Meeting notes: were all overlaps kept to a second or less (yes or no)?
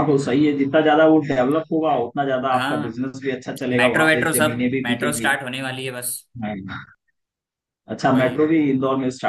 no